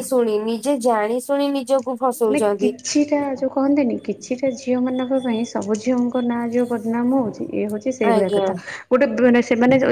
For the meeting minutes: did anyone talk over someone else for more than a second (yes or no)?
no